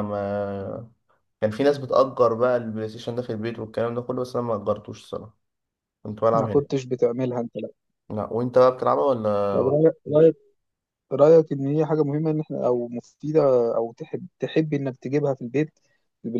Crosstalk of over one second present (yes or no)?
no